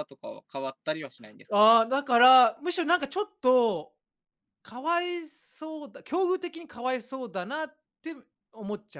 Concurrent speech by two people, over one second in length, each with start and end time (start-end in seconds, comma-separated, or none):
none